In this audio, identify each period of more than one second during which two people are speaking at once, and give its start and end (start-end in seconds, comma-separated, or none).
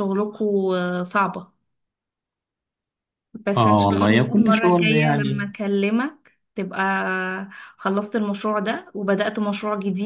3.6-5.5